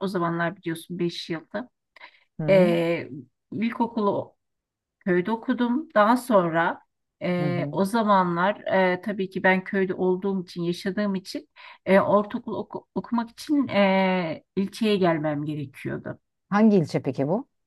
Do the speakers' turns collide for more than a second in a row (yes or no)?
no